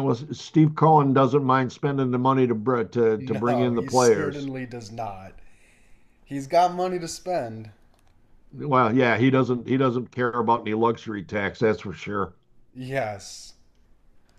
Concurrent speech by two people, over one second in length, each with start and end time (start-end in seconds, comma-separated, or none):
3.2-4.5